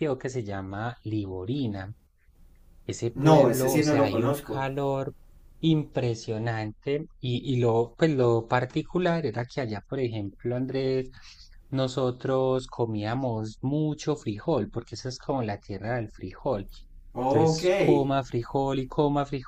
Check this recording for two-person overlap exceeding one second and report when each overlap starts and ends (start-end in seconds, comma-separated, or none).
3.1-4.7